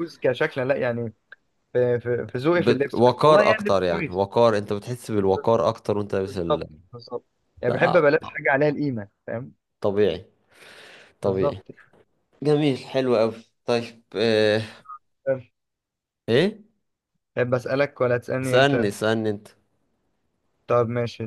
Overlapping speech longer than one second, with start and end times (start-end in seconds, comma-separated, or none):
2.6-4.2